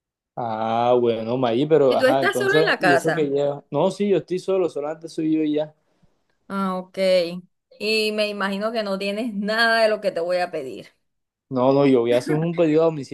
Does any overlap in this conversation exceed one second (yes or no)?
yes